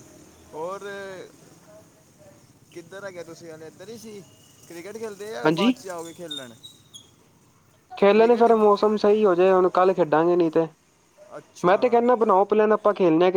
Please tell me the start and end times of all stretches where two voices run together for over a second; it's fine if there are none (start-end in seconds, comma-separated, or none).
none